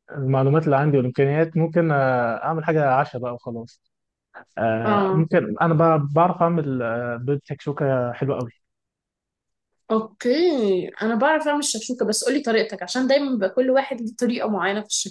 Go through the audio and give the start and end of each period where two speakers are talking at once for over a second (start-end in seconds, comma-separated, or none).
none